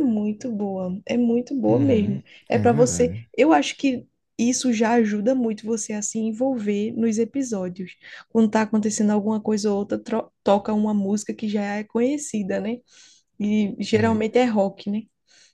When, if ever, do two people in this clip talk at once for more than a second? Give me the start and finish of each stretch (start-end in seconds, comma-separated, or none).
1.7-3.2